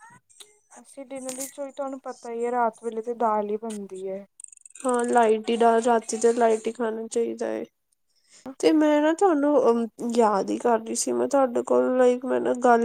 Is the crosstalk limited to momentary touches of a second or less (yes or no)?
yes